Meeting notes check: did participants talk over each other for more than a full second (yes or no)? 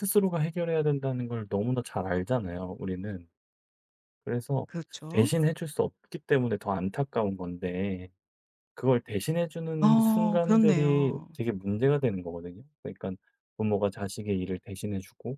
yes